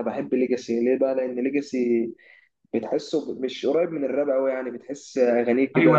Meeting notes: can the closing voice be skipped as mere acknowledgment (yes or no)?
no